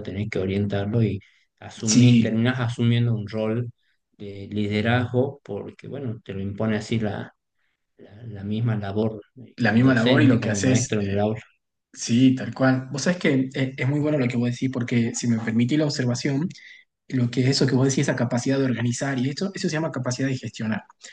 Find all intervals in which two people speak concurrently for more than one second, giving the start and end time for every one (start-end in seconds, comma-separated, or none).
9.6-11.2